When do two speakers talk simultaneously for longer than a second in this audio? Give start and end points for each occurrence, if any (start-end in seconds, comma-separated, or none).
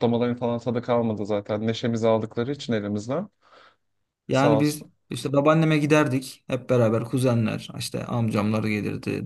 none